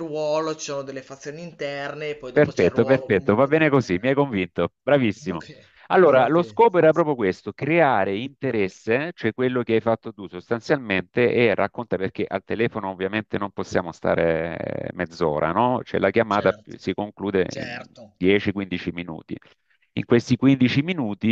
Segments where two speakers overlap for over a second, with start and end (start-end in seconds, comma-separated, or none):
2.3-4.0